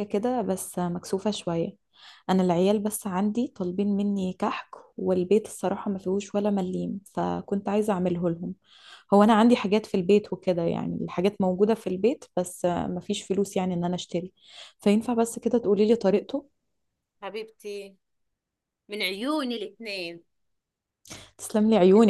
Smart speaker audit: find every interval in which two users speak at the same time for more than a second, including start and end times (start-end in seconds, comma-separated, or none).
none